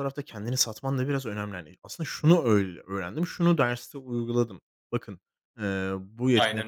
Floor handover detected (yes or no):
no